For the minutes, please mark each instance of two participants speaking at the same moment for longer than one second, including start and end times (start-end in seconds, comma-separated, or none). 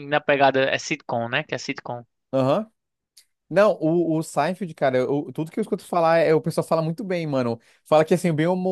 none